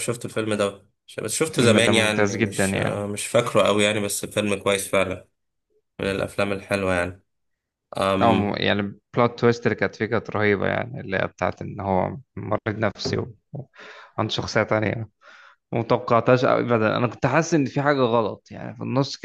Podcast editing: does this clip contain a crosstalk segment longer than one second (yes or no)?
yes